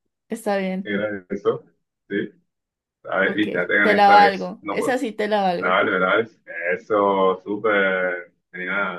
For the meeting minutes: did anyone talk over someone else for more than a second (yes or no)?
yes